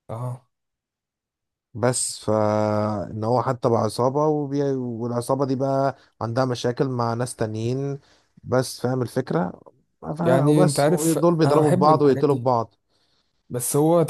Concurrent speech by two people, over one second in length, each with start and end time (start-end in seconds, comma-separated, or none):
10.2-12.5